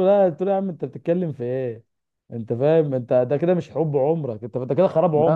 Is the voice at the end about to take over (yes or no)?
yes